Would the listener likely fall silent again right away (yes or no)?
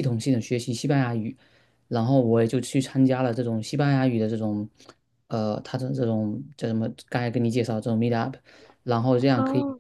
yes